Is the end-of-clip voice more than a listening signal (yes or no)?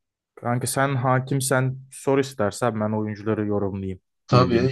yes